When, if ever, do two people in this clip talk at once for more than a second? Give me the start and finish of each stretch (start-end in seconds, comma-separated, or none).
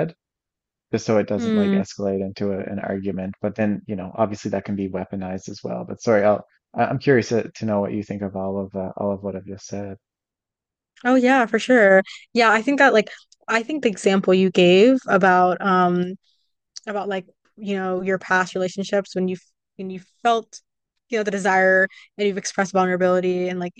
none